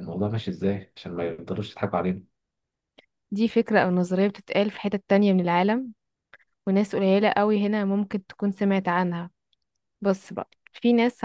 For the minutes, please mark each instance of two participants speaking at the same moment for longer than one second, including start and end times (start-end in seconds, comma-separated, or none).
none